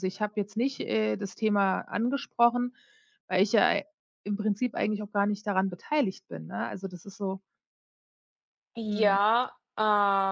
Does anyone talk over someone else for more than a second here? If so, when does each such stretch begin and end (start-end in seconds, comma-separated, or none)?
none